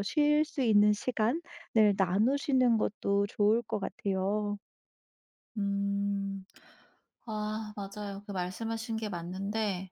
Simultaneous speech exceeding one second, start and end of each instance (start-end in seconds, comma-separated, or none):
none